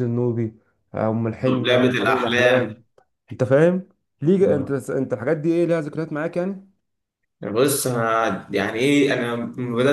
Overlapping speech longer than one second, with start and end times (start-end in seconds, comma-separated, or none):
1.4-2.8